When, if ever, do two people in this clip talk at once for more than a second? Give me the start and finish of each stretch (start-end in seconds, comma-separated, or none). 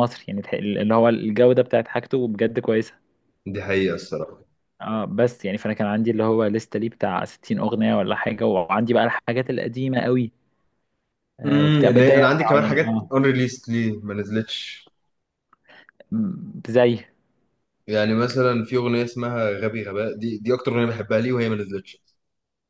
11.4-13.1